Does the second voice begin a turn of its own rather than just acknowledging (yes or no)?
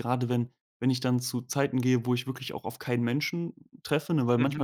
no